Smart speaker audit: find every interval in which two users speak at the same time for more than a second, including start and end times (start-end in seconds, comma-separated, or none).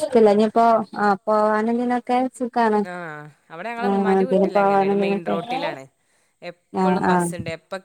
3.9-5.3